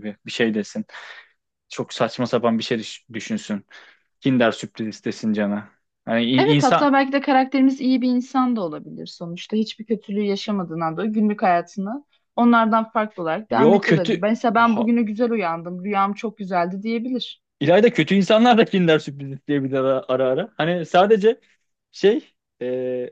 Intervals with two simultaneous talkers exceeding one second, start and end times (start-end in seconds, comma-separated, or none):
13.5-14.9